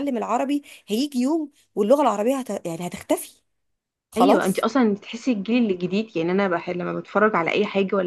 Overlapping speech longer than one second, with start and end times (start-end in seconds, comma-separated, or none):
none